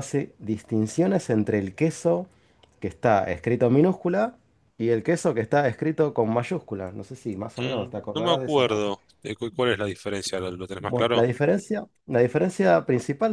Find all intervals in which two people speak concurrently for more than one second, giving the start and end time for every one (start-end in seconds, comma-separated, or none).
7.6-8.9